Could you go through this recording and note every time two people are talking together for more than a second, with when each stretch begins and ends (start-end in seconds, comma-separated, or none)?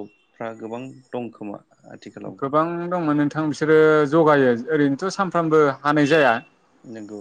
none